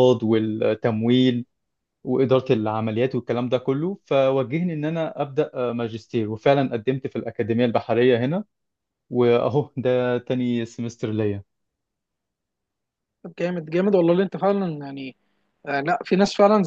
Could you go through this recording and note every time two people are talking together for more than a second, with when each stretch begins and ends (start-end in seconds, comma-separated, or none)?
none